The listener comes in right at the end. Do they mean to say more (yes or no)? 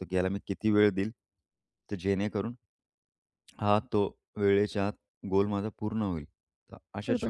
yes